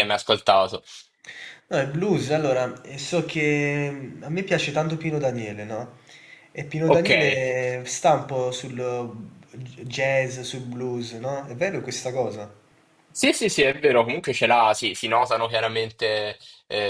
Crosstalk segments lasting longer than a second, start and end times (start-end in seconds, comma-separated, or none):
none